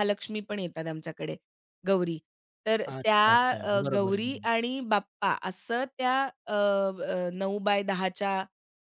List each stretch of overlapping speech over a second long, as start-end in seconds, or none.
2.9-4.5